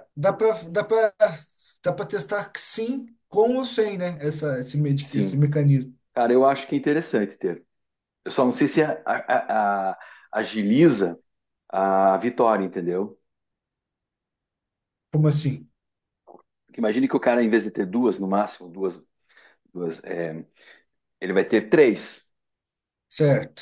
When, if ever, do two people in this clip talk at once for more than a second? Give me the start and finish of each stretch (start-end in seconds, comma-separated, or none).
none